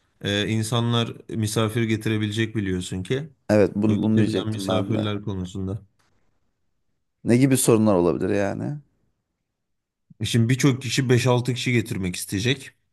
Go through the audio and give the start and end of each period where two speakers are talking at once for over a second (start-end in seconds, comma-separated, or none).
3.9-5.1